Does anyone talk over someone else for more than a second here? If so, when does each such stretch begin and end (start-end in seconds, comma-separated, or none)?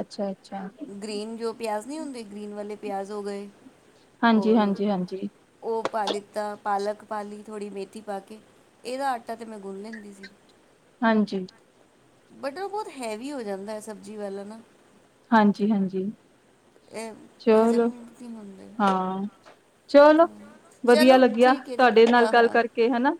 20.9-22.6